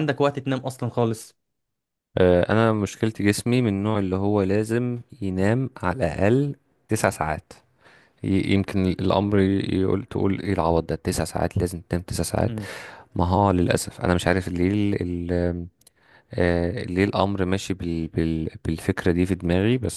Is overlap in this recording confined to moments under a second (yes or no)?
yes